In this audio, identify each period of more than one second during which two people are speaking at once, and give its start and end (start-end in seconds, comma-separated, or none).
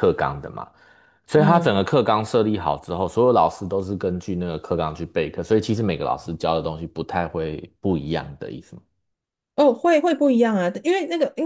none